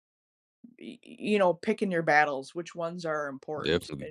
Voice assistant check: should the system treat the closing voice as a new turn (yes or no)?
no